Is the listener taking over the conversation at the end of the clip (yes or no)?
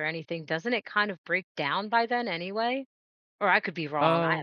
yes